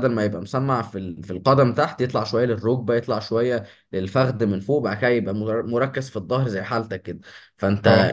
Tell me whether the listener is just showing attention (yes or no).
yes